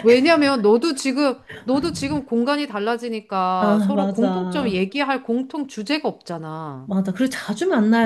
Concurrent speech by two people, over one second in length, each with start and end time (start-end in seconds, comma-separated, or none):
3.6-4.8